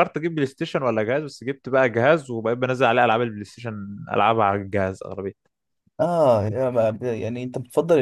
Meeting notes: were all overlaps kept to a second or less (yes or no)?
yes